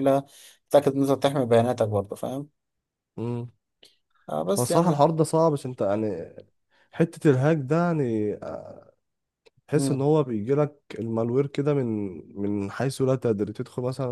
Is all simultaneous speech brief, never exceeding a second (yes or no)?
yes